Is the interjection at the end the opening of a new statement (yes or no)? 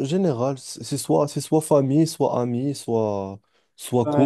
yes